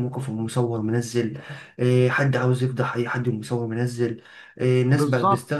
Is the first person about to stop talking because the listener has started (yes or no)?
no